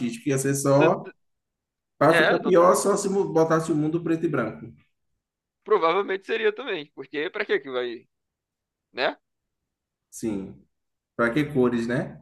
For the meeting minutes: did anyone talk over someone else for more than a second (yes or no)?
no